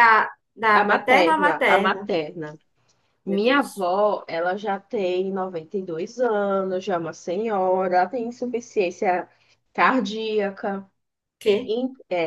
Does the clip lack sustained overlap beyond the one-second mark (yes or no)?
no